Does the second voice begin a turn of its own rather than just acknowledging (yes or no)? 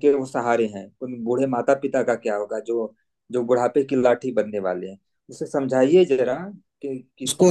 yes